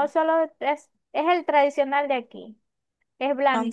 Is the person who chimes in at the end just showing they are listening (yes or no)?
yes